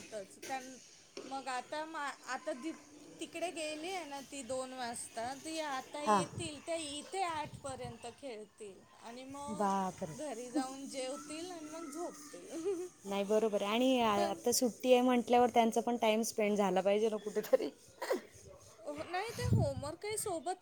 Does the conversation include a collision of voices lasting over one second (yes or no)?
no